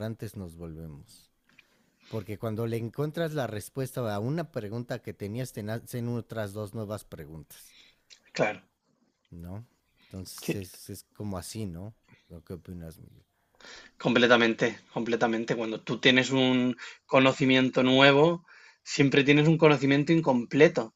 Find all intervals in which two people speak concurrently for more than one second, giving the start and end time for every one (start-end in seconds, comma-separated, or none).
none